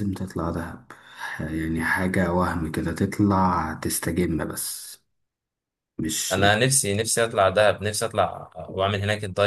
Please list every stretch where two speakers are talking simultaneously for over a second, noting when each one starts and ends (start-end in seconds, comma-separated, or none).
none